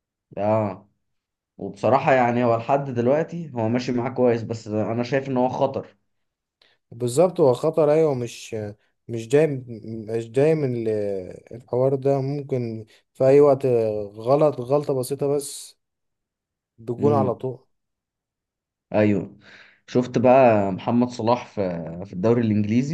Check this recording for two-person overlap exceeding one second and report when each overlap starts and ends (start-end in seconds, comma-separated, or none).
none